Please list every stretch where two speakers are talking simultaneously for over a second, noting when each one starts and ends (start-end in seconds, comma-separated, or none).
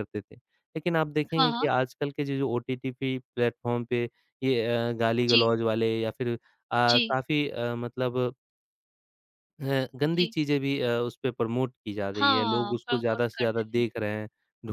12.2-13.8